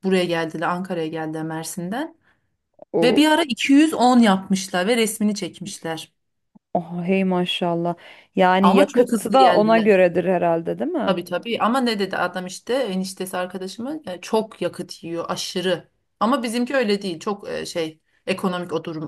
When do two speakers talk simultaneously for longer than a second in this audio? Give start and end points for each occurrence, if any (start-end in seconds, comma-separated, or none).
8.6-9.9